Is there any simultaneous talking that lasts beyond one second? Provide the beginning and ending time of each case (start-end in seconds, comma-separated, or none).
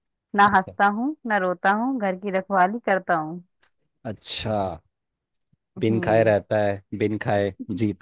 none